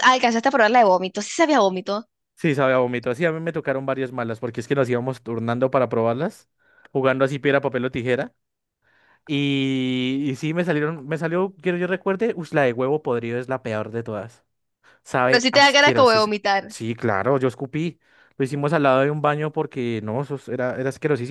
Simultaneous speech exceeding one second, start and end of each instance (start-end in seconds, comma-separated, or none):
15.3-16.8